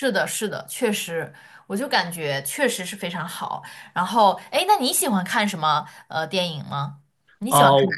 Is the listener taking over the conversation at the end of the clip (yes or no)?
yes